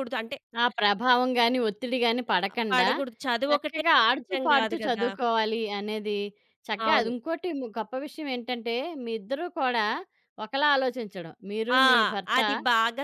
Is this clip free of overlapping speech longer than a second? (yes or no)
no